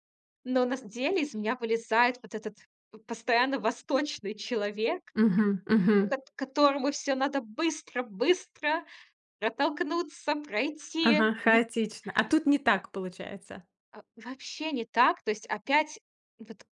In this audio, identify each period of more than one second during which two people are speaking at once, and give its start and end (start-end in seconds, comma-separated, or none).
none